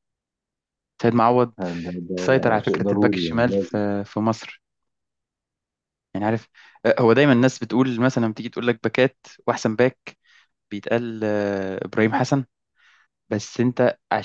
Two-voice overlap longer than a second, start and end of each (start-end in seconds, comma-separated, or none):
2.2-3.8